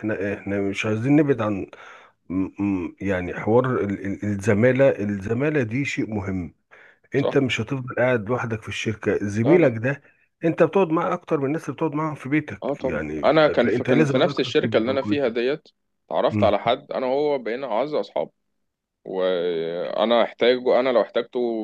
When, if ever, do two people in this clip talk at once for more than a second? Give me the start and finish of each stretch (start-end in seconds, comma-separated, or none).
12.6-15.3